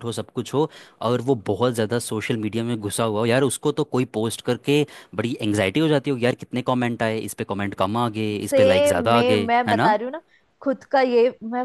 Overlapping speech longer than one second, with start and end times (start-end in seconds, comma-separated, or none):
8.4-9.9